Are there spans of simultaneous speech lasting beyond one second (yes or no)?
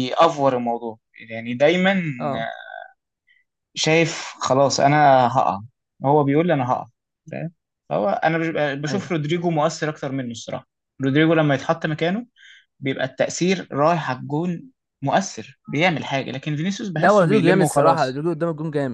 yes